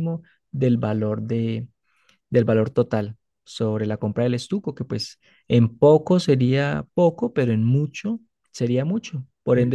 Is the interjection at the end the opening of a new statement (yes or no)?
yes